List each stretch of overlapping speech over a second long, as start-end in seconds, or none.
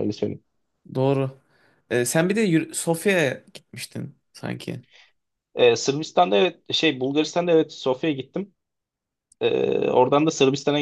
none